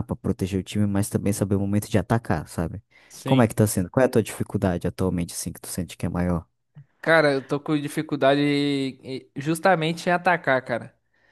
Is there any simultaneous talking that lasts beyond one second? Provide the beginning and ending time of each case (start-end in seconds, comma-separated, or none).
none